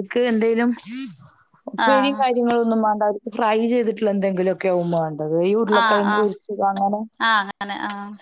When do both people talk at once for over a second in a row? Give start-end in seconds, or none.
none